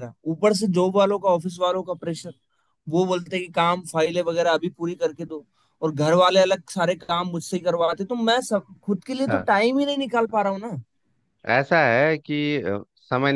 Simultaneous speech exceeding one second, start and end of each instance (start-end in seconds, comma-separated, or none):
none